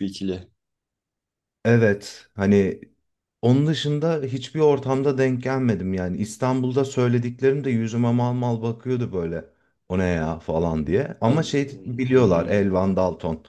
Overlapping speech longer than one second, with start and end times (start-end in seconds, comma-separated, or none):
11.2-12.7